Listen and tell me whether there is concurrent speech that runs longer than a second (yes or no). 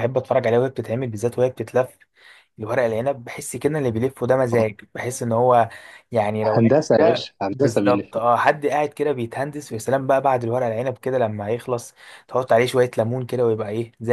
yes